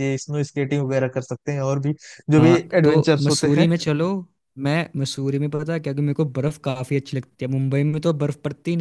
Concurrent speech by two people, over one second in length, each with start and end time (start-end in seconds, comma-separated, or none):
2.3-3.7